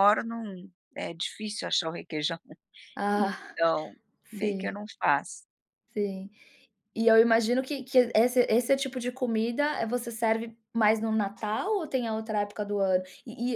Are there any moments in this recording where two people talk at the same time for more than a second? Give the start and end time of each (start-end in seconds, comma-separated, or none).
none